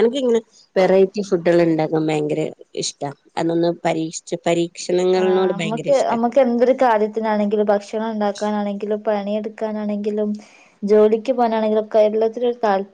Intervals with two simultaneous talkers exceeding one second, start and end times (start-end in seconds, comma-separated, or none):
none